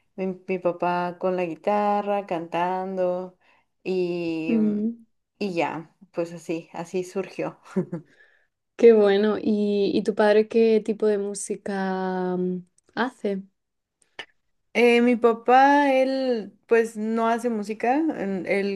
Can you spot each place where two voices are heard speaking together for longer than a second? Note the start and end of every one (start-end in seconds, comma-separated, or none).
none